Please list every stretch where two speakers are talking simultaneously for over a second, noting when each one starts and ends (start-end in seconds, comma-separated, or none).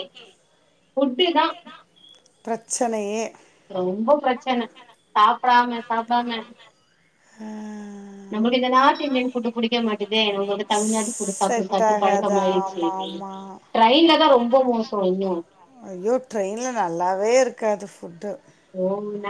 11.4-12.8